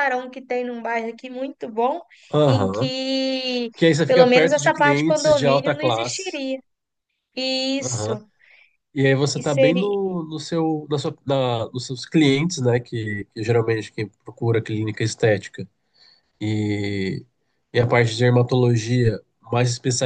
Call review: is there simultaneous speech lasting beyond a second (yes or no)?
yes